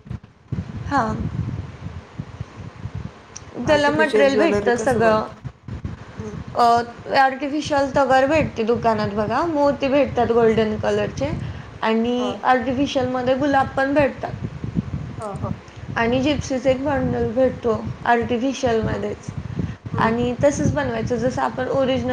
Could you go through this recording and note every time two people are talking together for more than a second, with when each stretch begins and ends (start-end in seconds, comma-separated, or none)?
3.7-5.2